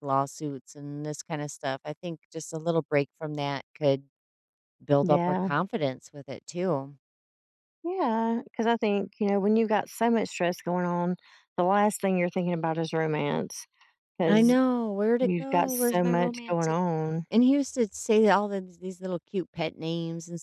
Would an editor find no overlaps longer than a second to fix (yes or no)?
no